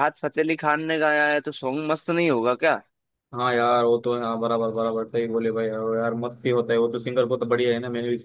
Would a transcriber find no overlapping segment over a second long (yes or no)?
yes